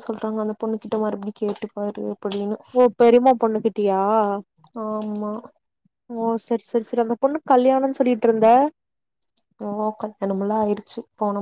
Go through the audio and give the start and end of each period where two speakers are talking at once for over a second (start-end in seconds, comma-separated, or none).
none